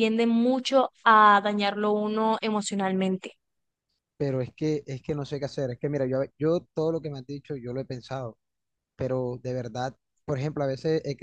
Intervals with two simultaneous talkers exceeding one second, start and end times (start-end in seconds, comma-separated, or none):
none